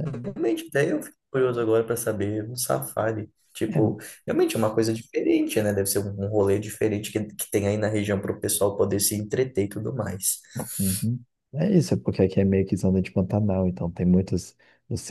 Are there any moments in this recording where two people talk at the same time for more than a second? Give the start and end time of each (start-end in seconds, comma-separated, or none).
none